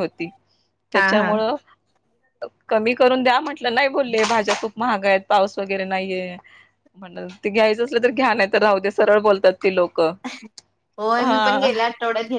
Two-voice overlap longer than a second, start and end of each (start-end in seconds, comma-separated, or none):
none